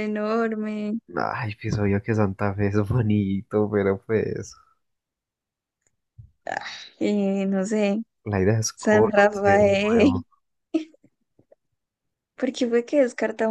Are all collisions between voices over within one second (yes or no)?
no